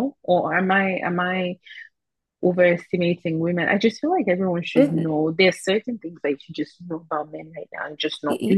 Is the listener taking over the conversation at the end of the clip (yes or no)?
yes